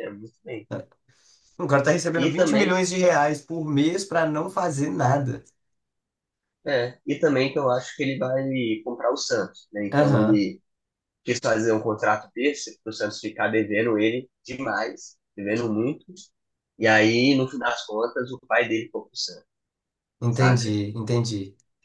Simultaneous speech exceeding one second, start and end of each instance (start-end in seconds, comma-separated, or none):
none